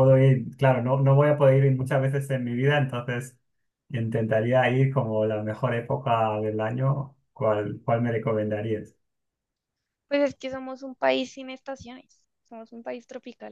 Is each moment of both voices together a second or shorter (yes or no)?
yes